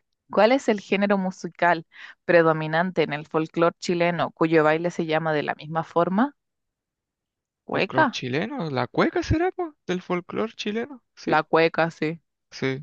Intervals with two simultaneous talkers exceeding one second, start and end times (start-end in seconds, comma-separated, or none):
none